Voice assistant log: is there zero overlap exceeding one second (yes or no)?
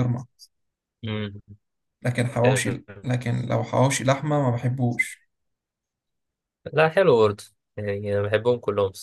yes